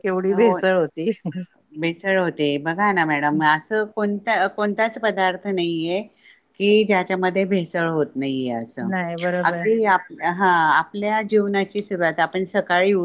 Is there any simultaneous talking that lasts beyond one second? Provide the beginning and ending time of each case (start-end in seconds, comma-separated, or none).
none